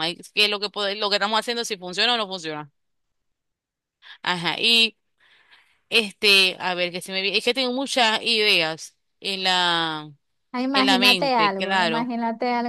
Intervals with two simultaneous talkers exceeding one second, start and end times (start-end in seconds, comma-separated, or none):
10.7-12.1